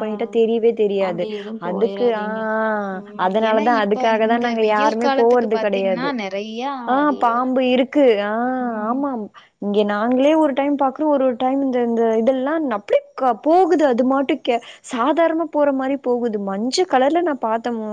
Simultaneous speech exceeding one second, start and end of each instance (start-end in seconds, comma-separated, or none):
3.2-6.0